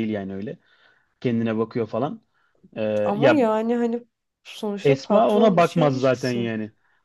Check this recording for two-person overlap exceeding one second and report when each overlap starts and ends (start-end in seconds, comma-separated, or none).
4.8-6.5